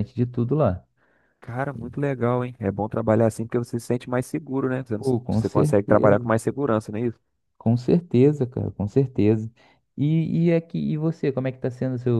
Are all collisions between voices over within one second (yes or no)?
no